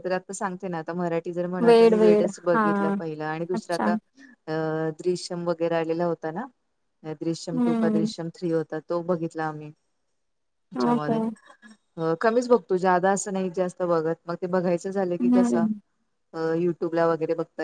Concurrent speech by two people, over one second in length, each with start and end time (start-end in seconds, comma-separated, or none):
none